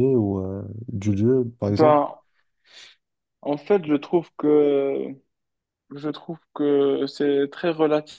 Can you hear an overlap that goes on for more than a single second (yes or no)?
no